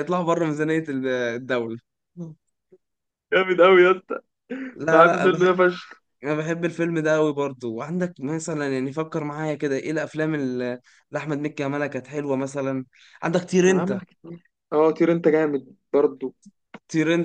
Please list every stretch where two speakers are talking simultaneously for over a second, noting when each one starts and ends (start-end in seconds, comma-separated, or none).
none